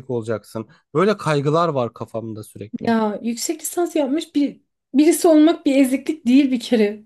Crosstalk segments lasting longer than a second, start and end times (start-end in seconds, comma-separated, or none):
none